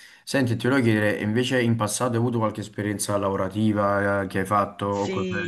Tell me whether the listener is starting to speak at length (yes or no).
yes